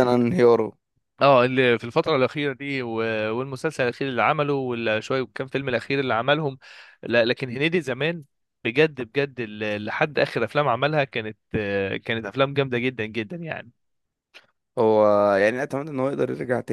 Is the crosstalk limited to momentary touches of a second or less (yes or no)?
yes